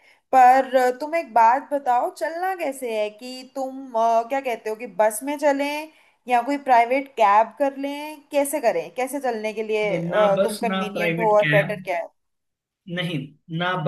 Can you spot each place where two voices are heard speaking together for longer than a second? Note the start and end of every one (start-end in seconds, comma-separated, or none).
9.8-11.8